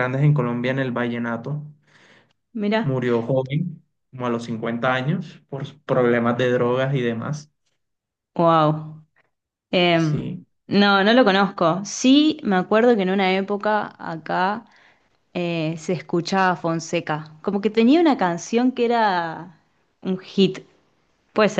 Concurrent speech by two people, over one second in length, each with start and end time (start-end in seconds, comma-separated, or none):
none